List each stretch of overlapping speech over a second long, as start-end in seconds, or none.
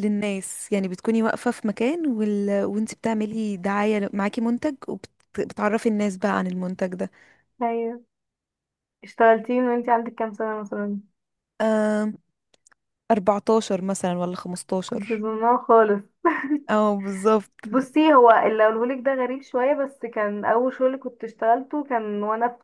none